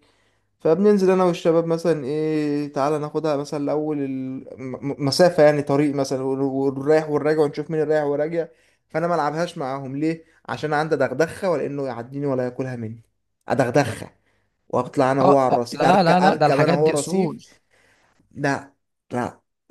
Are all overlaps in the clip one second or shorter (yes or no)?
no